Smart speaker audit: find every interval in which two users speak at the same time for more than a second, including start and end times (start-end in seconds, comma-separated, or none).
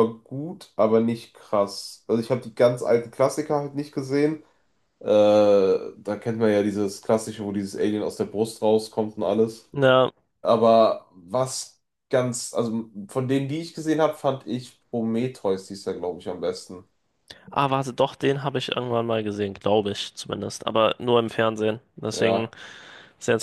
none